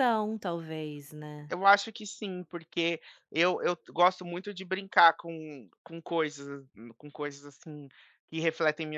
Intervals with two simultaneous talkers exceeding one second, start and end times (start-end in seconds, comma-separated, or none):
none